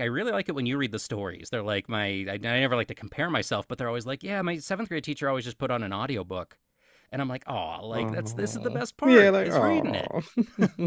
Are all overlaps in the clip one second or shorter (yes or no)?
no